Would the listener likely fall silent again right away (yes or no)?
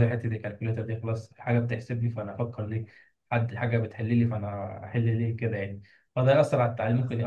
yes